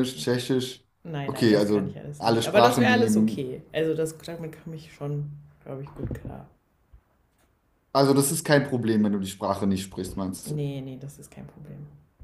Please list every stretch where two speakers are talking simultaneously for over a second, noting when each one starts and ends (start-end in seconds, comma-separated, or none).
1.2-3.5